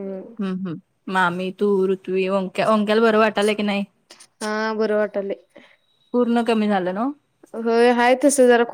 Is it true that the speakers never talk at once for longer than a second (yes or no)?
yes